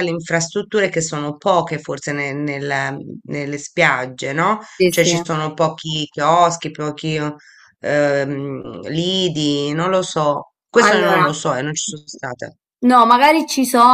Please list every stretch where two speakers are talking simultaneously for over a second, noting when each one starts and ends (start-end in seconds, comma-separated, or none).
none